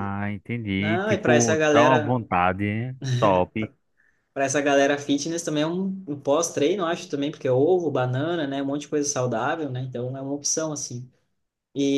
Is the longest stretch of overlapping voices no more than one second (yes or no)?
no